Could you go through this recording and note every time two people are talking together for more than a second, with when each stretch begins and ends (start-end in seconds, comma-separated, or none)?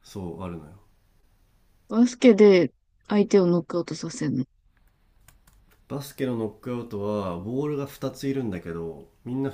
none